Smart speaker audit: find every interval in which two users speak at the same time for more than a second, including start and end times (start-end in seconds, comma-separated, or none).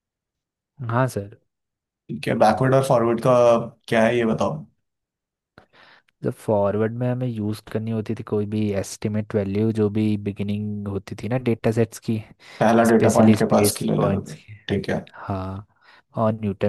12.9-14.6